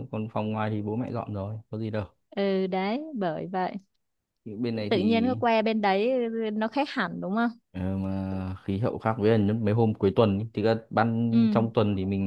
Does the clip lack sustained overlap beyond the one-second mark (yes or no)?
yes